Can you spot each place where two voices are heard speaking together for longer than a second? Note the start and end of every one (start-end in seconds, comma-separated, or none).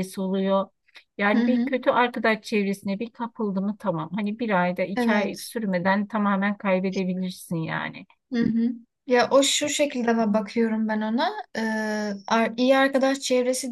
none